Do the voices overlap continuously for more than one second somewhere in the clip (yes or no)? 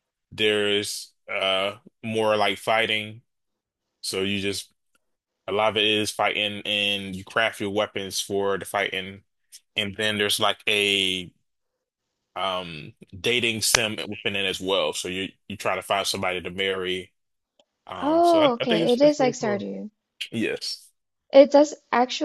yes